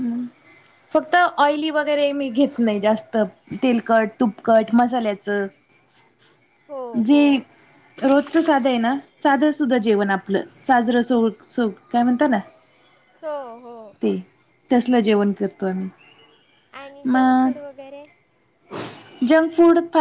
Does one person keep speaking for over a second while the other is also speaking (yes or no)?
no